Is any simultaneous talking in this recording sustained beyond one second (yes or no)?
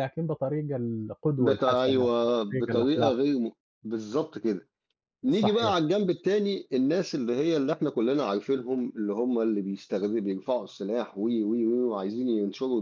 yes